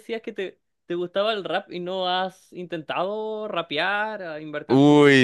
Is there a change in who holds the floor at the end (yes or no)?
yes